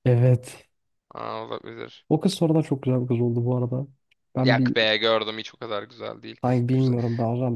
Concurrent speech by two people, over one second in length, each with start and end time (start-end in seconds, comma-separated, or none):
none